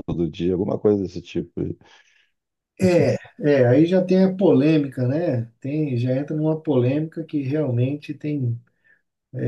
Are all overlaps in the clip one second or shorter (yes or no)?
yes